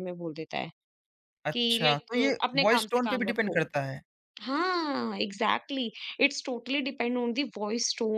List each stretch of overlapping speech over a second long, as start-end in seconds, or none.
1.5-3.6